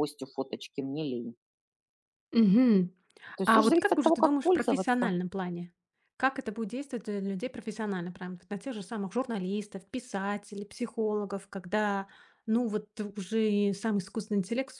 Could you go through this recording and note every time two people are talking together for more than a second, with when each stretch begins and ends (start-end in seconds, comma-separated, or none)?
3.5-5.1